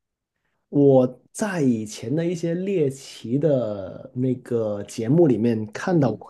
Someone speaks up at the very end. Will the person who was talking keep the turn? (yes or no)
yes